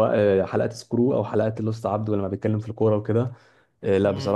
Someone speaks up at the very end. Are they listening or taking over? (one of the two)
taking over